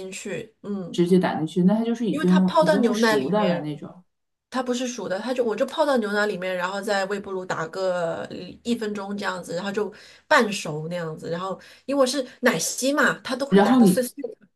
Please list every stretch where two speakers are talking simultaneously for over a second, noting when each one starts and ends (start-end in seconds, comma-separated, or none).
2.1-3.7